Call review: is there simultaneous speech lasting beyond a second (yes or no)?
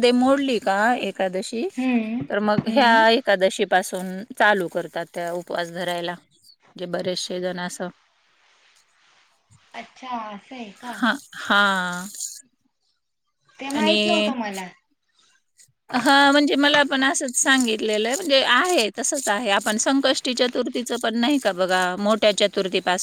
no